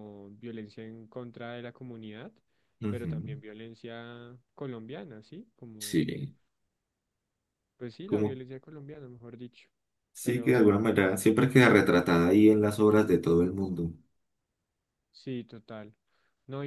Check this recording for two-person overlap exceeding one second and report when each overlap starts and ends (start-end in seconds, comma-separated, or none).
none